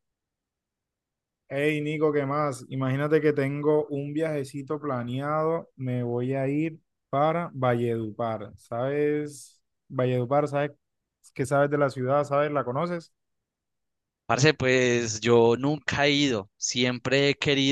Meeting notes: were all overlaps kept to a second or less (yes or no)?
yes